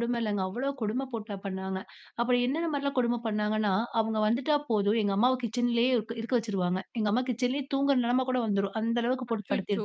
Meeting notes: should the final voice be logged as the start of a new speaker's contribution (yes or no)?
yes